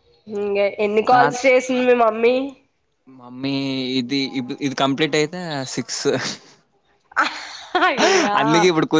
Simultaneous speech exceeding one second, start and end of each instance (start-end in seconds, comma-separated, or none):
none